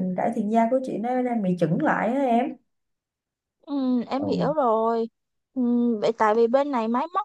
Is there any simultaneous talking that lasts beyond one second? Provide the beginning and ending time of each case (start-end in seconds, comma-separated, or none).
none